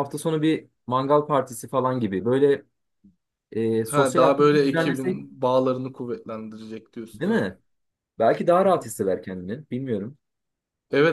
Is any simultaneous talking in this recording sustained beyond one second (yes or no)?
yes